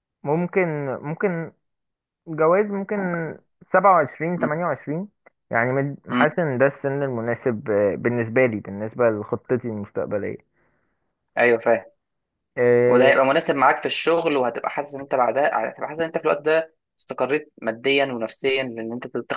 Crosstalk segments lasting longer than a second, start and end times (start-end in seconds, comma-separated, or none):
none